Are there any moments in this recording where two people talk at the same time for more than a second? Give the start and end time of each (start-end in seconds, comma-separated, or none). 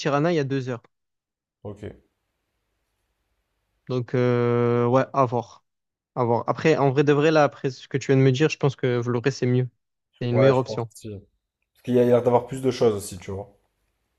none